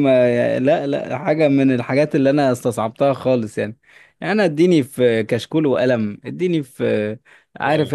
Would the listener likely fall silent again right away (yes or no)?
yes